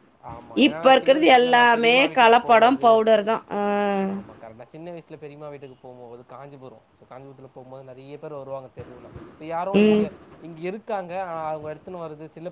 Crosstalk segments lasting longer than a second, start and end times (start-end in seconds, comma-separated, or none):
0.7-2.9